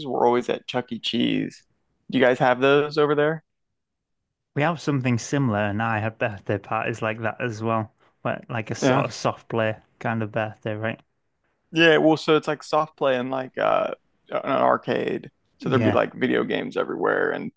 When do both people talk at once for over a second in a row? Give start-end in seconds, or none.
none